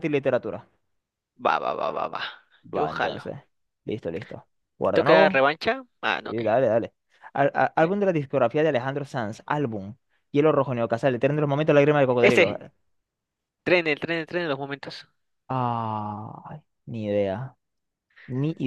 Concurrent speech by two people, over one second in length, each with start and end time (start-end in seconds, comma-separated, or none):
none